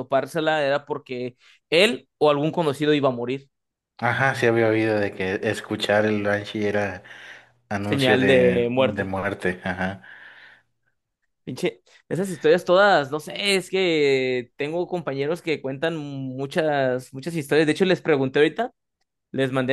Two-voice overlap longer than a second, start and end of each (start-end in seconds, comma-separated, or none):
7.8-9.1